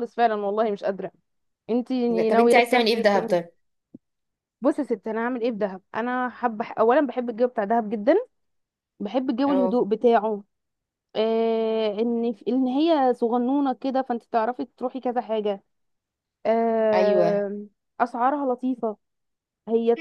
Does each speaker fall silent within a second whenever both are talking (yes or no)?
no